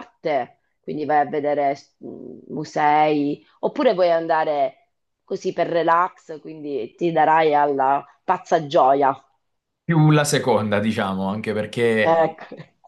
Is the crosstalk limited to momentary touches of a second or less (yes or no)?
yes